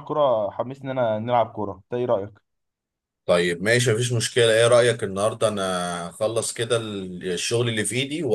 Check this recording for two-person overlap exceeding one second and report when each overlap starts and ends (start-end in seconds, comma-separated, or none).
none